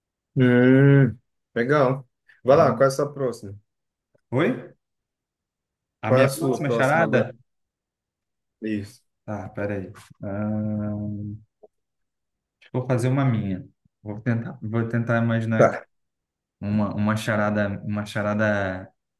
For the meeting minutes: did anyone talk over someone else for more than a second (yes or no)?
yes